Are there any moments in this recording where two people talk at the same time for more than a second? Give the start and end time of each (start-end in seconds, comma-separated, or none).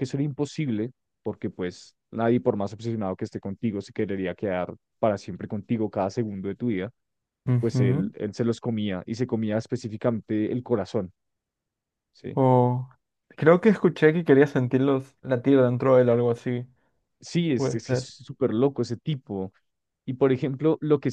none